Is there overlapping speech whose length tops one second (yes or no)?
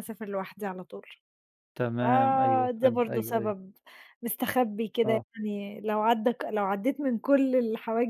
yes